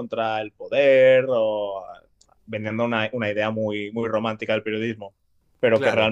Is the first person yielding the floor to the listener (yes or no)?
no